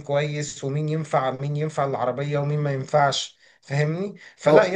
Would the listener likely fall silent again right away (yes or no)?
yes